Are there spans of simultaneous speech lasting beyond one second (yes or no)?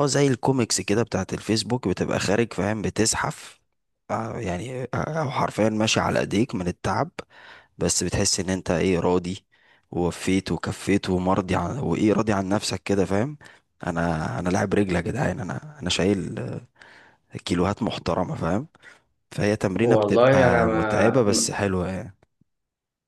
yes